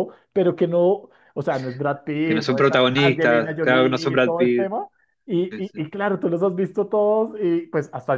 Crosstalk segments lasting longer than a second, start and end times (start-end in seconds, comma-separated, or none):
2.2-4.7